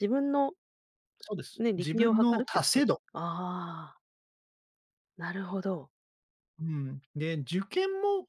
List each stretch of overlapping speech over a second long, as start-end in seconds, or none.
1.6-3.0